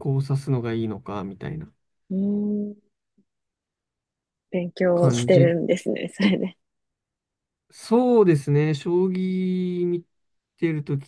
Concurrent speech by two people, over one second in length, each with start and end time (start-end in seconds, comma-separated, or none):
none